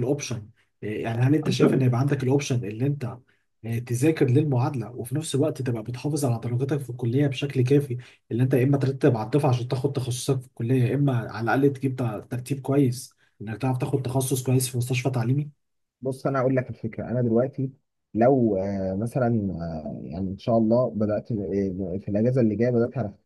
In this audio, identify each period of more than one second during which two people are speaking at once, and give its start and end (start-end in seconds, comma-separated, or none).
none